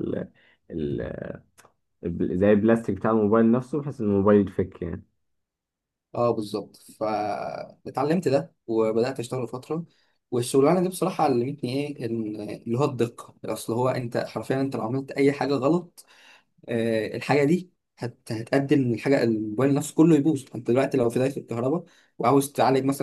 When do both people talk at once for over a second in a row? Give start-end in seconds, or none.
none